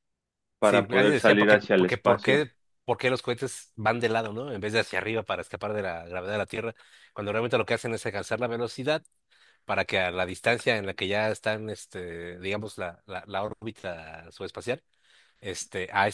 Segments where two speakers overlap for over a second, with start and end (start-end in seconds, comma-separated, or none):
0.6-2.5